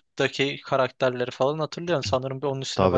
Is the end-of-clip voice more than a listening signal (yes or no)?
yes